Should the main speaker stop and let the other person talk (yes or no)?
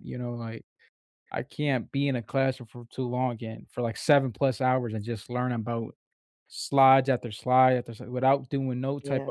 no